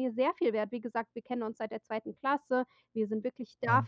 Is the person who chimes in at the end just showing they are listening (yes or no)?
yes